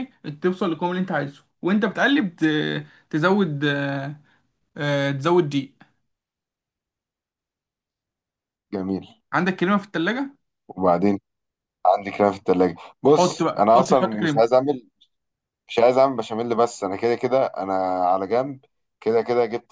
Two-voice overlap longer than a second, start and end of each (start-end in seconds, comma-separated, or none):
13.2-14.5